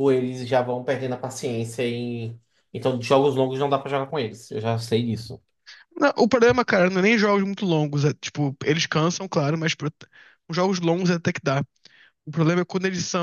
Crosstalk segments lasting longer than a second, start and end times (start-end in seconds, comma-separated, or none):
none